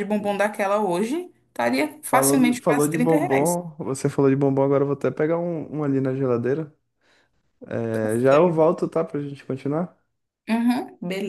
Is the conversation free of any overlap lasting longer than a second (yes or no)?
no